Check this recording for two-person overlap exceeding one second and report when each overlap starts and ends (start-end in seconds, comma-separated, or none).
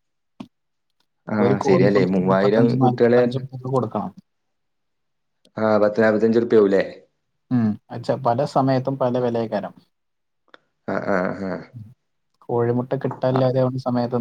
1.4-3.2